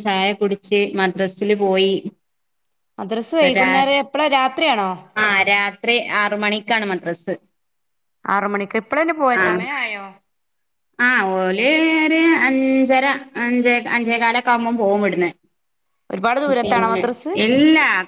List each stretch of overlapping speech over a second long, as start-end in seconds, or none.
none